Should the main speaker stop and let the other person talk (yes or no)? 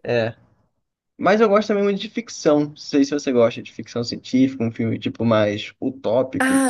yes